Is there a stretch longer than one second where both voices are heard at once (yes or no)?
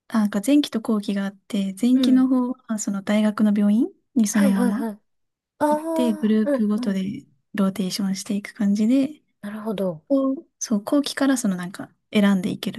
yes